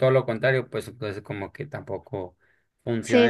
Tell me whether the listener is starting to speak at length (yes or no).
yes